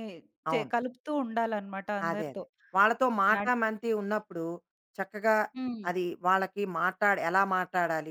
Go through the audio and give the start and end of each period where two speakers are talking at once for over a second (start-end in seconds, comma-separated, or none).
none